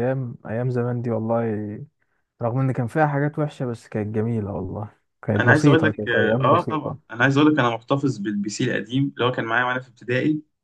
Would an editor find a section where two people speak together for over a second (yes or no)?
yes